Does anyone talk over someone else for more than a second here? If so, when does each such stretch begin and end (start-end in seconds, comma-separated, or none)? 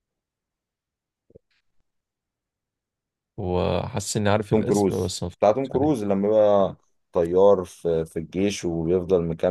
4.5-6.1